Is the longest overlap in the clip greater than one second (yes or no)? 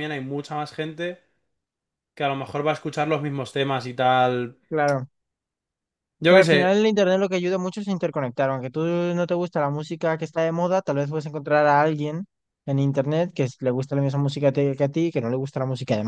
no